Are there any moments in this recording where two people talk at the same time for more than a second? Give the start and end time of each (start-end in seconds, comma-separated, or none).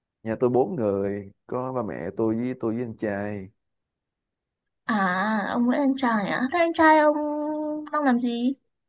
none